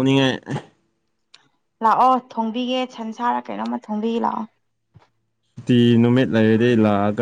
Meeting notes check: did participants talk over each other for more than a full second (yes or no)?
no